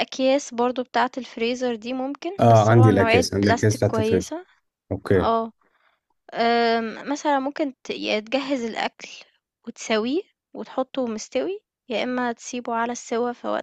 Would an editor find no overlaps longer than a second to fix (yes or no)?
no